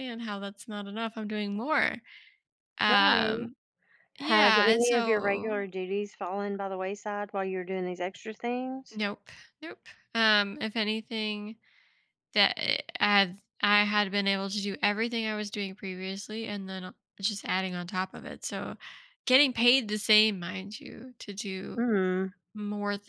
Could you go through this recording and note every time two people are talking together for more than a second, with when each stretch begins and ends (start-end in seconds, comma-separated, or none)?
4.2-5.6